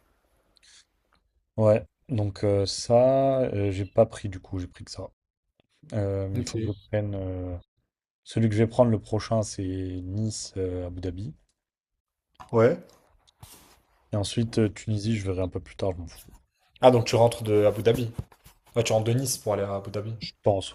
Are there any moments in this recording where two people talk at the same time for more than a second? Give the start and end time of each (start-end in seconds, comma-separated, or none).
none